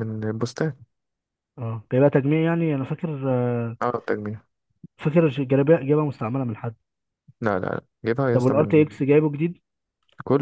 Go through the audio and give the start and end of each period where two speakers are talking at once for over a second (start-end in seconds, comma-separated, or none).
none